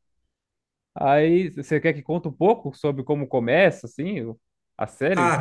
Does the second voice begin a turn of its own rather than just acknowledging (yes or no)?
yes